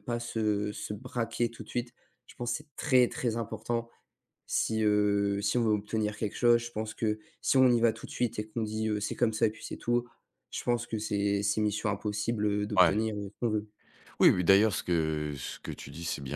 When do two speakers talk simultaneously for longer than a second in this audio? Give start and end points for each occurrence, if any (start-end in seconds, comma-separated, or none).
none